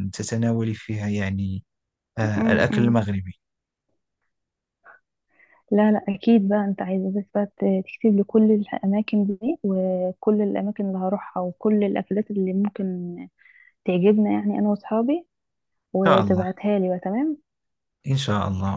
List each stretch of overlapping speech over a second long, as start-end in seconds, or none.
none